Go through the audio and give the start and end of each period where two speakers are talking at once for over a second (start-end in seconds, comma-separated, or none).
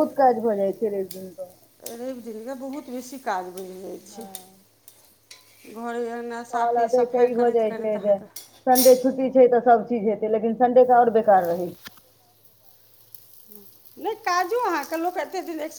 6.5-8.2